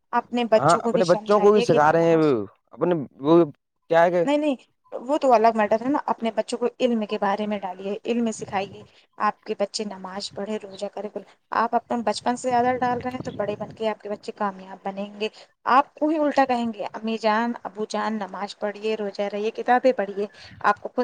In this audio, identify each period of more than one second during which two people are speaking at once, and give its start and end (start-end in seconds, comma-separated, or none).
0.6-2.1